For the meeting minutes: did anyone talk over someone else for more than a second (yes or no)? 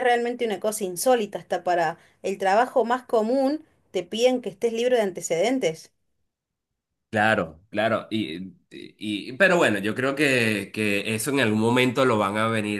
no